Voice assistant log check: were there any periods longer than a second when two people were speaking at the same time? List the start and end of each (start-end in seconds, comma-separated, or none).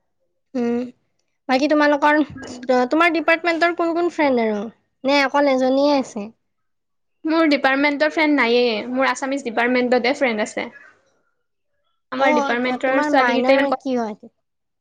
12.2-13.9